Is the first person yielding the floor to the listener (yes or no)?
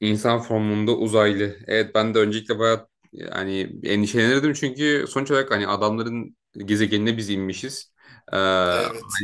no